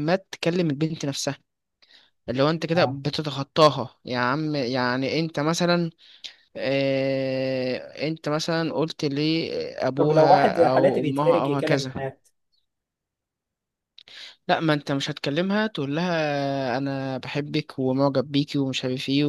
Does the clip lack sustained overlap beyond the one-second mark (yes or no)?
no